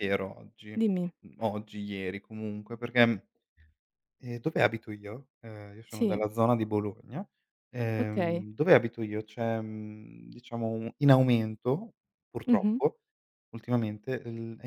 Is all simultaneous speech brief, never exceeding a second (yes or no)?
yes